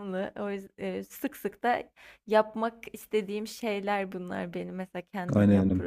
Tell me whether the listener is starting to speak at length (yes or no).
yes